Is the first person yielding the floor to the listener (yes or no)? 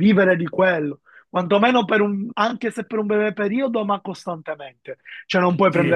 no